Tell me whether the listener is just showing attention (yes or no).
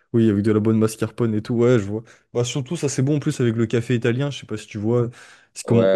no